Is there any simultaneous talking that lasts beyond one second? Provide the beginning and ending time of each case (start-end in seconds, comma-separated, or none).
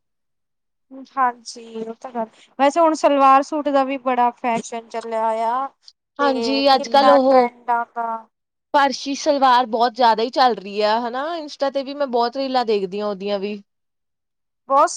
none